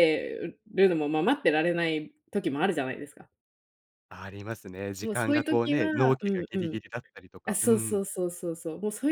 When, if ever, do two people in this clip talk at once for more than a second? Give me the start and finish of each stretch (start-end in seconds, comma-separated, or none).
5.0-6.8